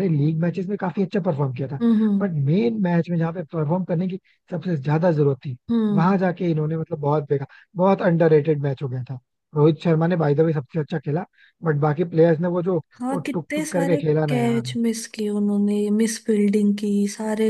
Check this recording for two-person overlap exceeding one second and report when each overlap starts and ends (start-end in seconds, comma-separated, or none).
13.0-14.8